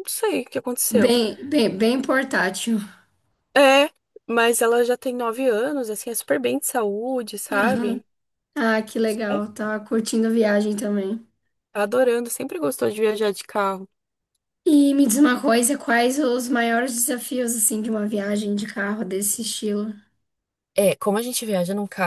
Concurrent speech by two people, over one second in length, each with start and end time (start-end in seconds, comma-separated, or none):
none